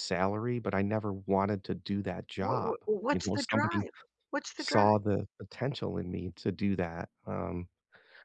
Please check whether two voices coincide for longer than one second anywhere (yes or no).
yes